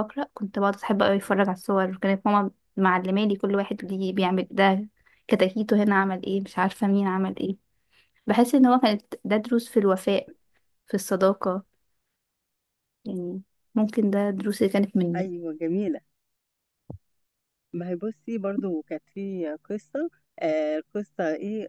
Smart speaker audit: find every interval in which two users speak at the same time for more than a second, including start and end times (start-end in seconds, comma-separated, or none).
none